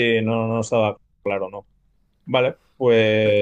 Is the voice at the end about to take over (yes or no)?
yes